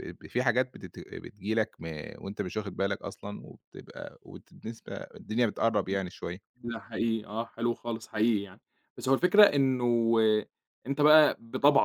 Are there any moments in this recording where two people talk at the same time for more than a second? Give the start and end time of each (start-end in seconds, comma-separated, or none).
none